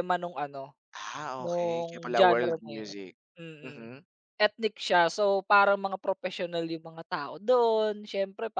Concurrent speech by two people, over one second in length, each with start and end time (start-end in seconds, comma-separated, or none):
1.4-2.9